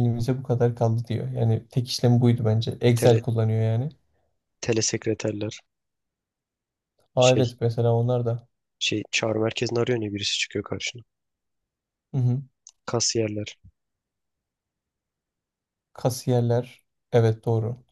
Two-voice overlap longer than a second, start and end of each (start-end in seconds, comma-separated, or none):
none